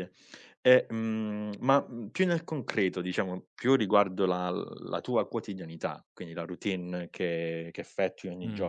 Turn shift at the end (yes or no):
no